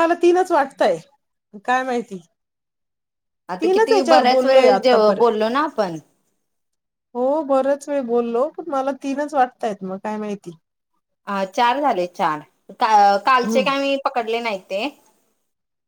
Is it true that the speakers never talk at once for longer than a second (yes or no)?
no